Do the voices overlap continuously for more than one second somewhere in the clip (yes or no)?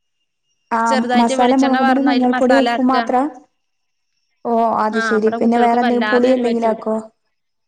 yes